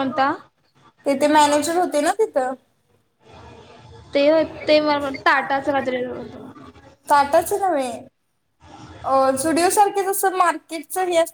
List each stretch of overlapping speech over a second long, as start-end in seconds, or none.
none